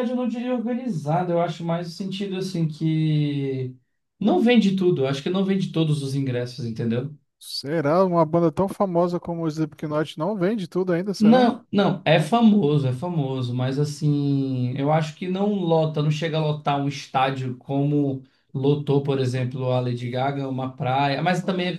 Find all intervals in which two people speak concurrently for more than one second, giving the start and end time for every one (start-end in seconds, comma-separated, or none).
none